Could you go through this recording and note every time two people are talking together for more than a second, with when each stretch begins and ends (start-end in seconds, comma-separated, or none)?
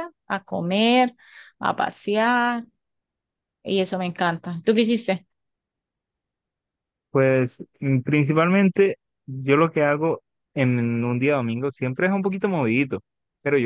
none